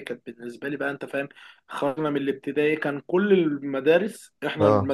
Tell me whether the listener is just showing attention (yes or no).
yes